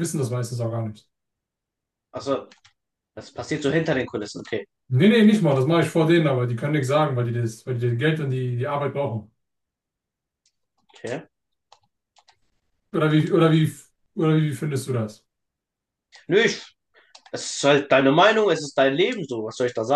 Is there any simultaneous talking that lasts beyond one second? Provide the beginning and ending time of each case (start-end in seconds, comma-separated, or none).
none